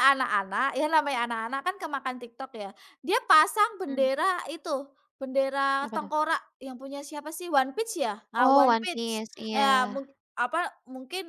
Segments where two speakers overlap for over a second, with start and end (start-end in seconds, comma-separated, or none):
8.4-10.0